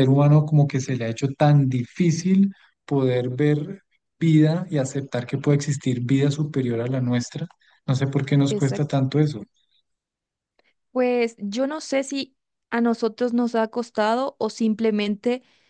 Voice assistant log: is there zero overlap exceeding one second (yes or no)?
yes